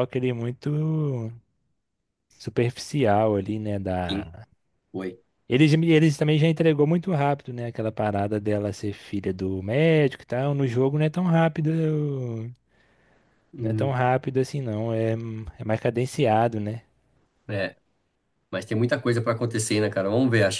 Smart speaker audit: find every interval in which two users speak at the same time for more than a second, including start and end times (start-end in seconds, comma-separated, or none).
none